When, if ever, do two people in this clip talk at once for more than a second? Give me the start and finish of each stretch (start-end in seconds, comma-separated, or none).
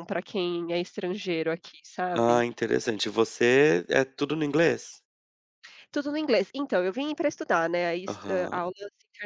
none